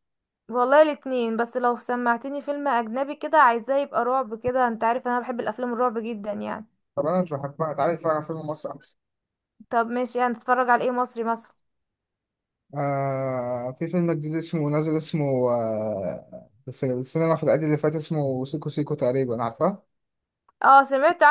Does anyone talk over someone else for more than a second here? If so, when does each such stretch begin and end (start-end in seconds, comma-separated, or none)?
none